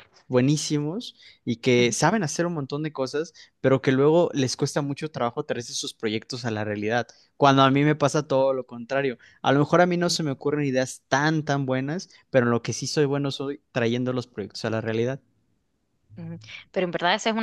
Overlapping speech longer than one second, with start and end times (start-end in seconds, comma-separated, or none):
none